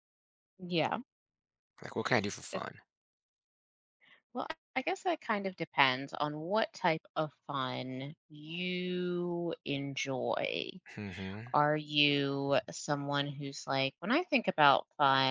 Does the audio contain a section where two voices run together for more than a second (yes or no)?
no